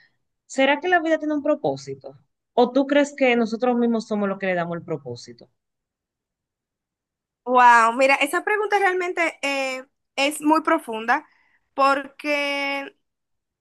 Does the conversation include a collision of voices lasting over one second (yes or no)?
no